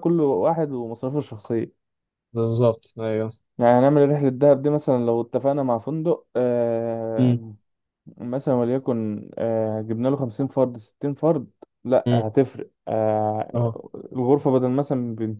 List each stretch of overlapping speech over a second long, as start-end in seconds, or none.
none